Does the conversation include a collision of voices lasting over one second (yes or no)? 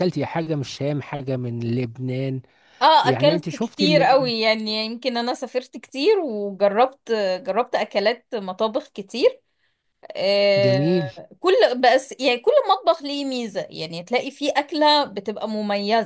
yes